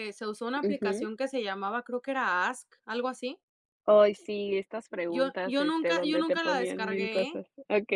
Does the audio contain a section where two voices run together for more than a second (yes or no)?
yes